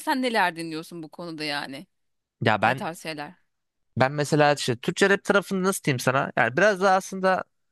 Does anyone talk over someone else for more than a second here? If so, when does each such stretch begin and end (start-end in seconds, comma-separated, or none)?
none